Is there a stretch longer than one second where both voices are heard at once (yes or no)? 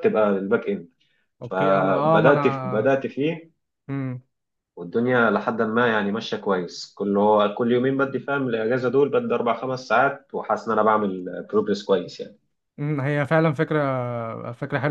yes